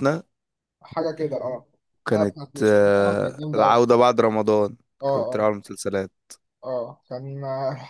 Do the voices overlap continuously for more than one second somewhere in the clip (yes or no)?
yes